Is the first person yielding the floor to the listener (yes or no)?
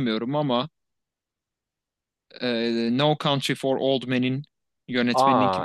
no